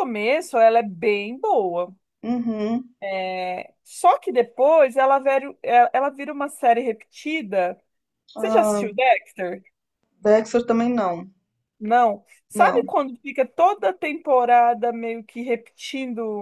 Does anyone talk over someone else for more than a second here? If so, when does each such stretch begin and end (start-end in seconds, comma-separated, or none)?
none